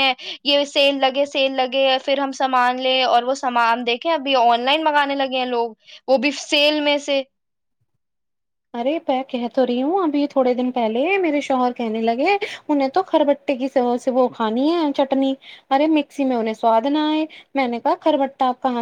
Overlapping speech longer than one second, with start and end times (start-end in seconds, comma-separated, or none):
none